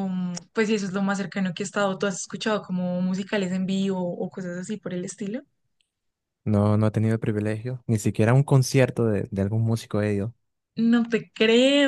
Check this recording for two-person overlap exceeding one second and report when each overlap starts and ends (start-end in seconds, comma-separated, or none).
none